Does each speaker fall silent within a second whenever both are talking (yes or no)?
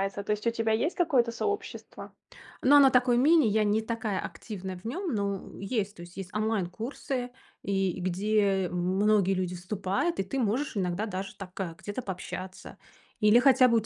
yes